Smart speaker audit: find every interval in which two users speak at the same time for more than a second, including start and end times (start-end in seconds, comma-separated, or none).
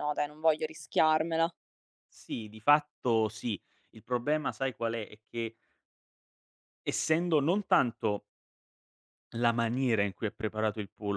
none